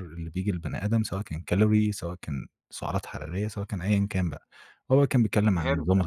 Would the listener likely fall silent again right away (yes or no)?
yes